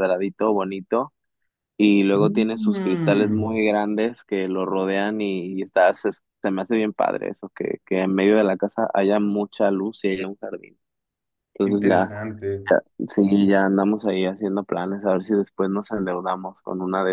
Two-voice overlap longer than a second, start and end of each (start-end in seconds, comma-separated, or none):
2.1-3.5